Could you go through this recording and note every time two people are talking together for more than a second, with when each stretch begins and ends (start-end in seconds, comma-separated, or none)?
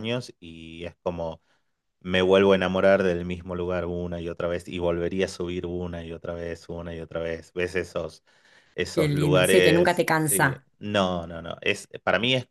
8.9-10.7